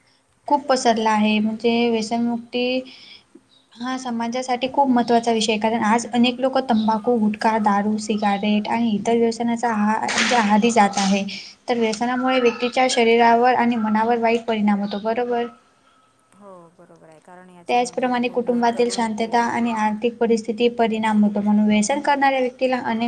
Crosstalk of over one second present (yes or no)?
yes